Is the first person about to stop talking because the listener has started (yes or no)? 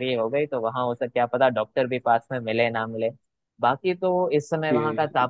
no